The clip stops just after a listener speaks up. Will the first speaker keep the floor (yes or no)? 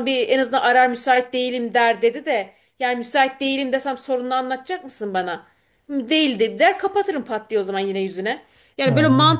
yes